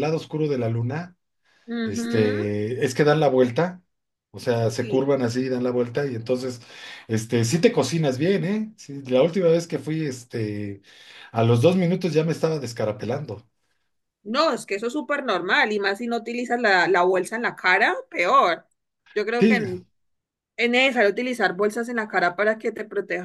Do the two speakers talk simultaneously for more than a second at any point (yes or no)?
no